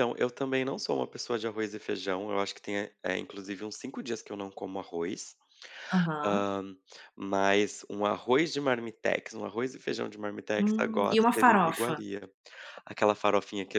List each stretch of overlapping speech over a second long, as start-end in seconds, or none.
10.6-12.0